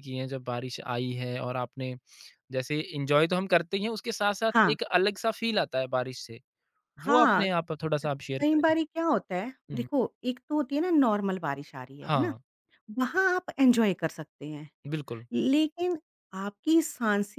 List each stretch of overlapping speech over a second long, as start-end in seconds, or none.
none